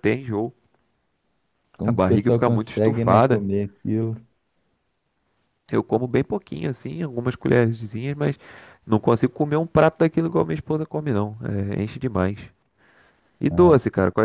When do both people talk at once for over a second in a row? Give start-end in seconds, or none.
1.8-3.4